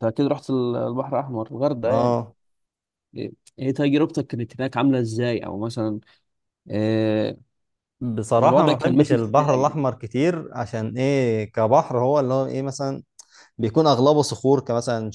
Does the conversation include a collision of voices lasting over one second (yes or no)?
yes